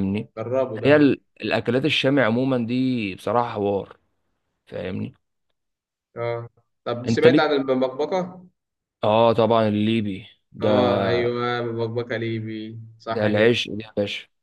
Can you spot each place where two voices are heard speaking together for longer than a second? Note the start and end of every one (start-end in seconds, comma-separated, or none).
none